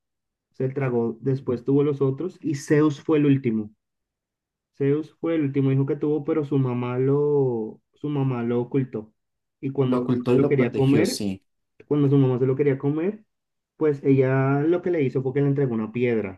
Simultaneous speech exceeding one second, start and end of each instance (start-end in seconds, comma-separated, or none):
9.9-11.3